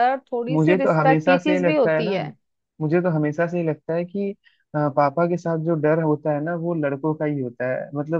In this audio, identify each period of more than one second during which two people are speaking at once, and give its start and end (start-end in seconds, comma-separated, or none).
0.5-2.1